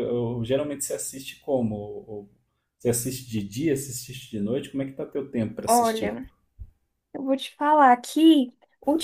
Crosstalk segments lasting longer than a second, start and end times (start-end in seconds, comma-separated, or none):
none